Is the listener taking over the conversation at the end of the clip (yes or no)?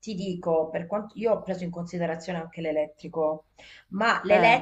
no